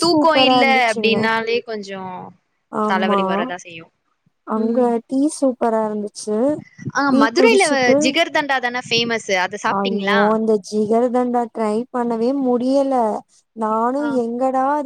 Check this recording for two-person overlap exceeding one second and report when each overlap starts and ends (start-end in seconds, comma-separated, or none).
none